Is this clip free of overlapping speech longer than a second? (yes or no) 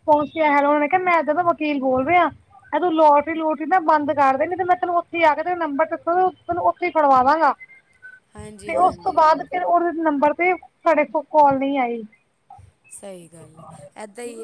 yes